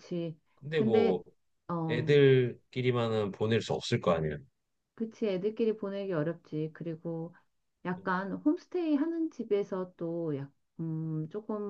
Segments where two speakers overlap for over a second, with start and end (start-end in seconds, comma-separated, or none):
none